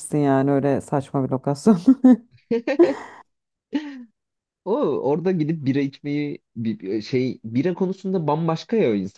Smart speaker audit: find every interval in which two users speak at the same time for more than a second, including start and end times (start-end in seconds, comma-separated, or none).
none